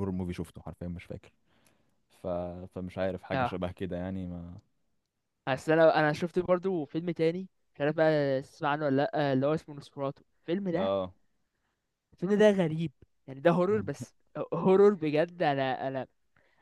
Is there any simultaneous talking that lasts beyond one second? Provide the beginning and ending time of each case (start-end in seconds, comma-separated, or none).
none